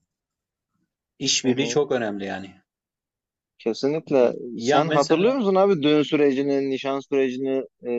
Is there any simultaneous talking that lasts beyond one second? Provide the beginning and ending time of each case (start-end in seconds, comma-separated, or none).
4.1-5.4